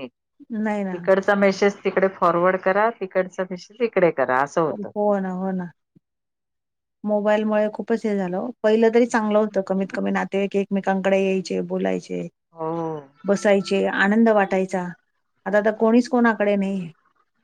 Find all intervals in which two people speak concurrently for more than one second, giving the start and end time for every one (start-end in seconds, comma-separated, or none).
none